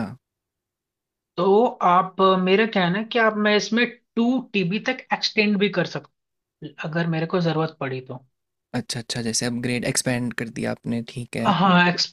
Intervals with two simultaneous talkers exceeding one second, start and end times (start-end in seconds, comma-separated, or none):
none